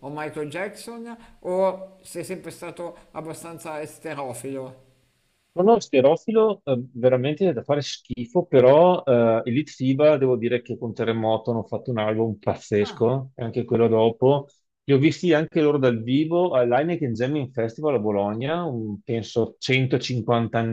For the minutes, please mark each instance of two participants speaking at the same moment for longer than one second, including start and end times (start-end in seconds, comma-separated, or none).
none